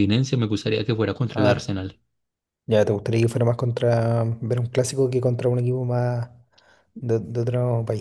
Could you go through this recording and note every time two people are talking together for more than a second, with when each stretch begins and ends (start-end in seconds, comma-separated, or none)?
none